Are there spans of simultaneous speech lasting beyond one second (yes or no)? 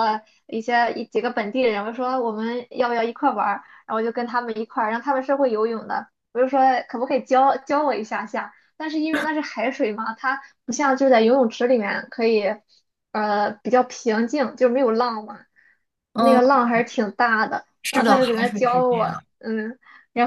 yes